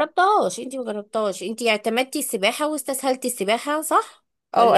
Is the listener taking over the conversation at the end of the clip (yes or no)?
yes